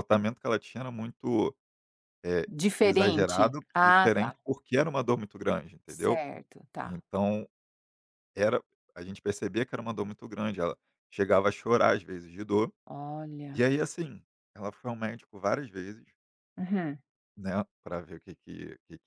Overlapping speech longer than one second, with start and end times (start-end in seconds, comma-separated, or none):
2.5-4.4